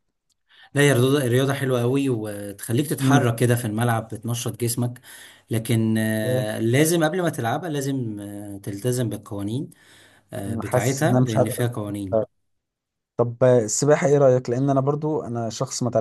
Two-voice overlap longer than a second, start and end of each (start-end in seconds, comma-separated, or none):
10.5-11.7